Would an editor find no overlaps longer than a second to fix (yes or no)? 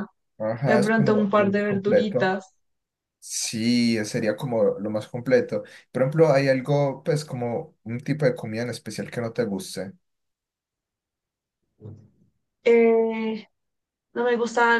no